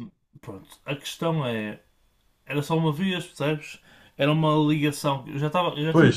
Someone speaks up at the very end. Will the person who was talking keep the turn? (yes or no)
yes